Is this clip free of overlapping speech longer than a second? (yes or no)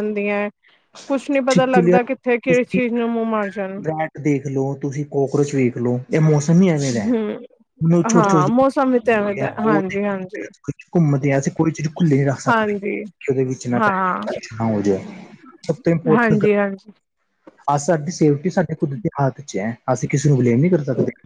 no